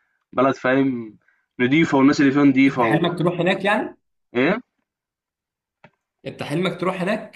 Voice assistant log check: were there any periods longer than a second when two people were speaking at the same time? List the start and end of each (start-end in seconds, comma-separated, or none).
none